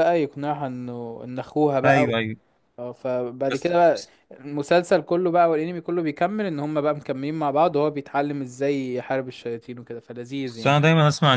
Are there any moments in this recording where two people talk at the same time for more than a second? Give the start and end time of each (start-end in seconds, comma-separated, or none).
none